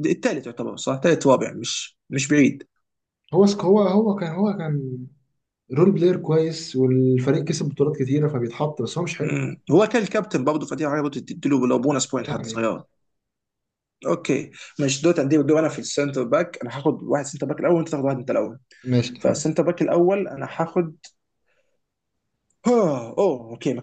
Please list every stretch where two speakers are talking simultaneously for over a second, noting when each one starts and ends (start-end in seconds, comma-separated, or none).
none